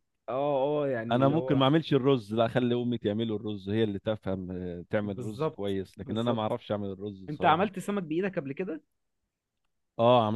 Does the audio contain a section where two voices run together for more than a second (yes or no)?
yes